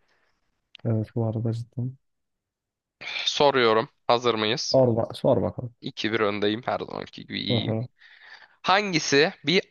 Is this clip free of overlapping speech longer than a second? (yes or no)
yes